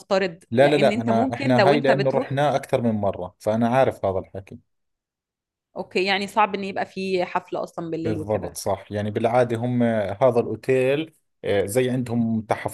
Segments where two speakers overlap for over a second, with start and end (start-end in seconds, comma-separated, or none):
0.5-2.4